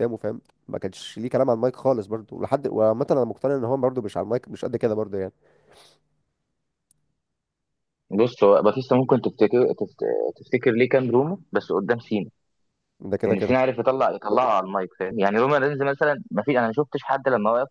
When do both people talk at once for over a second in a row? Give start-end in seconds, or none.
none